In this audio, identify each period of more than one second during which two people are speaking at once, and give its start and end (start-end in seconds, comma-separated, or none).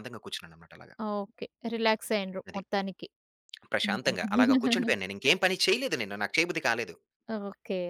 none